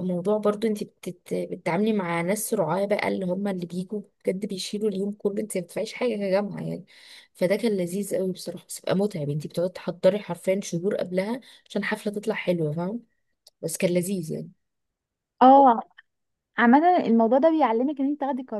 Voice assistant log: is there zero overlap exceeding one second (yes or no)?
yes